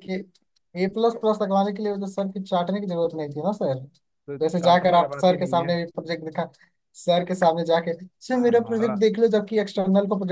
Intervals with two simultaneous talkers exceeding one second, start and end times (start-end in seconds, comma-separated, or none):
4.4-5.7